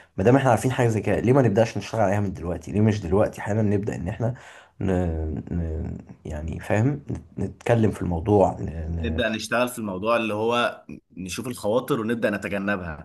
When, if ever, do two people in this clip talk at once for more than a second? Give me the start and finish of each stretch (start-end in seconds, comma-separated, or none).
none